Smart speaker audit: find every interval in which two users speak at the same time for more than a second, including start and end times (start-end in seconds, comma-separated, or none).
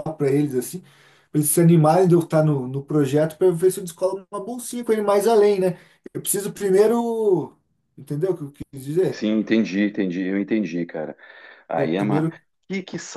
none